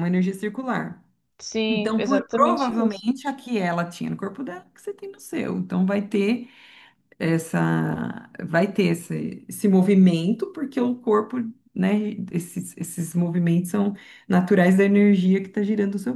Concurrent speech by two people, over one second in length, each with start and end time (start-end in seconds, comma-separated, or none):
1.7-3.0